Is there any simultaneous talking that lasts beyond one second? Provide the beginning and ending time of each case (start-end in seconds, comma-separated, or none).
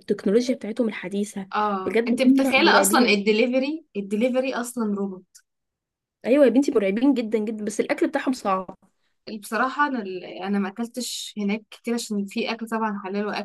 1.9-3.2